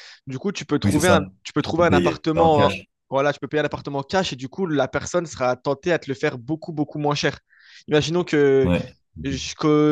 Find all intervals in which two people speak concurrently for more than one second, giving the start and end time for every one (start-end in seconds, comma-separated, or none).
0.8-2.7